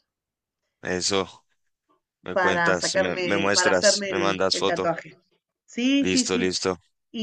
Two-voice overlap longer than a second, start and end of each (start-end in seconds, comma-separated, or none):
2.3-4.9